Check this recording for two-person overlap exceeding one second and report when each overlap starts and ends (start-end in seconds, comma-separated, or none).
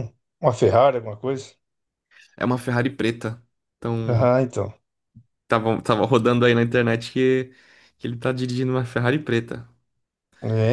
none